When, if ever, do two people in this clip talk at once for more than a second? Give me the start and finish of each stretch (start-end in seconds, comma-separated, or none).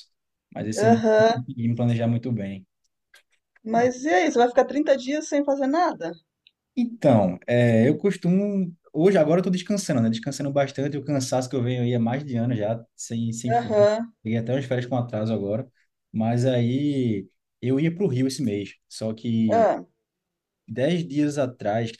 none